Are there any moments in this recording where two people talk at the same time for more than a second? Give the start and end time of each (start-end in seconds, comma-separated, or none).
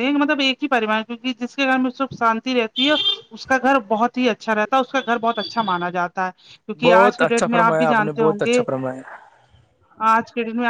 6.8-8.6